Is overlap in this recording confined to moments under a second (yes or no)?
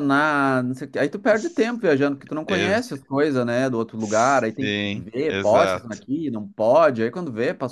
no